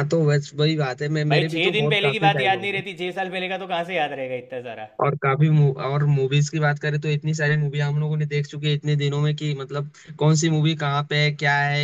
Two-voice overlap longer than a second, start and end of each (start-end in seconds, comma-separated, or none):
1.3-2.8